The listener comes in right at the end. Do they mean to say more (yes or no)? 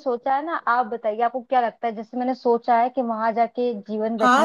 yes